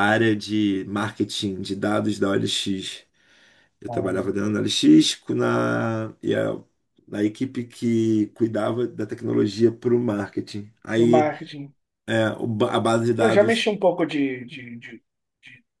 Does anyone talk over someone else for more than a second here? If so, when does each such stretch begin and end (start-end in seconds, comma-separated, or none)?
none